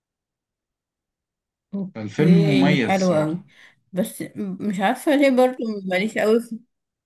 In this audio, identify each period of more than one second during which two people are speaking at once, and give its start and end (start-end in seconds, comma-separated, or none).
1.9-3.4